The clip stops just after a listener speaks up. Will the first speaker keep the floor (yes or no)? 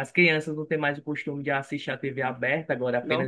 yes